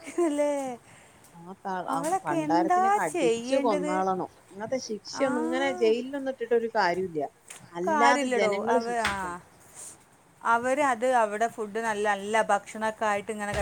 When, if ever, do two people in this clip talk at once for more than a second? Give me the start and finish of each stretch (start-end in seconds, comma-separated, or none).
1.9-3.9